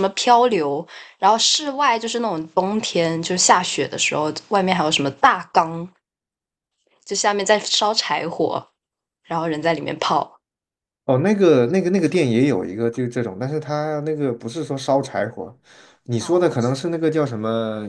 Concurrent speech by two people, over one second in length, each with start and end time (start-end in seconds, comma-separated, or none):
none